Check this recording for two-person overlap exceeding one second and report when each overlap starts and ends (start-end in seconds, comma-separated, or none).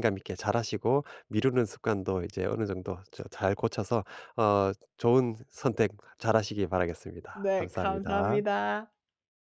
7.3-8.6